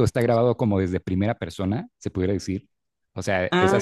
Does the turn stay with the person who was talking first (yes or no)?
yes